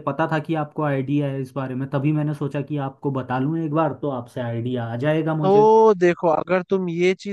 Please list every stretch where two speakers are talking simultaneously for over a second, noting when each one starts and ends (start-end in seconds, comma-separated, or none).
none